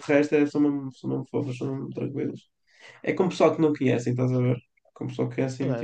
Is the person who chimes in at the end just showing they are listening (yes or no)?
no